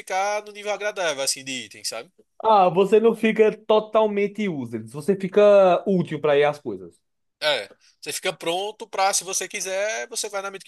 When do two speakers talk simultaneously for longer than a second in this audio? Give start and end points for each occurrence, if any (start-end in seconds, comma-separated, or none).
none